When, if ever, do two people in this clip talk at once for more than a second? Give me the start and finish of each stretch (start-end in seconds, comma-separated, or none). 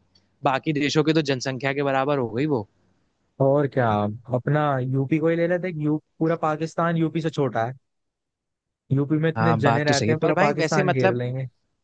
9.4-11.2